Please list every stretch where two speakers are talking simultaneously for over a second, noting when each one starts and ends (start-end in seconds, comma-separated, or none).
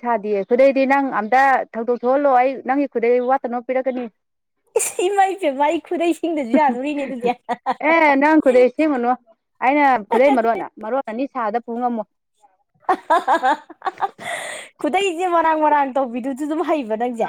none